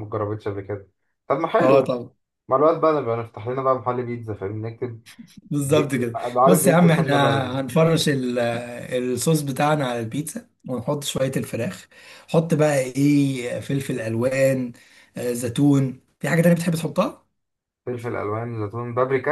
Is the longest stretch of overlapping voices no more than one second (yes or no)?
no